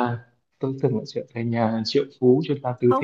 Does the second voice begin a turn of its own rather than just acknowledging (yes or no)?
yes